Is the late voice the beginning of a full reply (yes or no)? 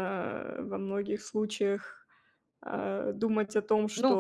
yes